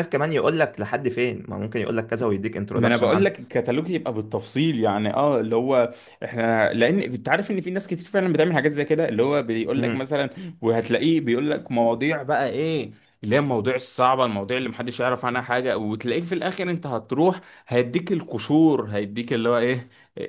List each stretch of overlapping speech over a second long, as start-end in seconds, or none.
none